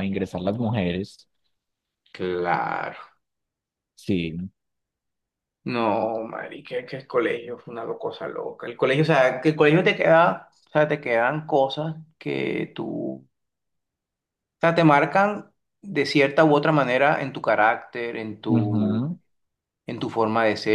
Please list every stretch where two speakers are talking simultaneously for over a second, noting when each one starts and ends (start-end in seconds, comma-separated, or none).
none